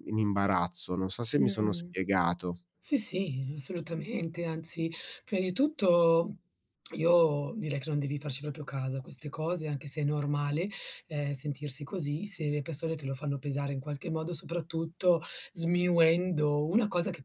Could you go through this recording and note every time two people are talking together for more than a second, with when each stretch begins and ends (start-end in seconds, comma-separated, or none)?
none